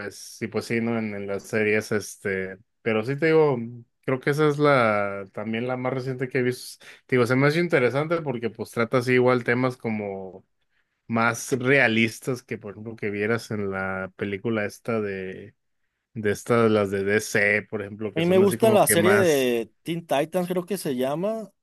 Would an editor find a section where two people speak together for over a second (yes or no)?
yes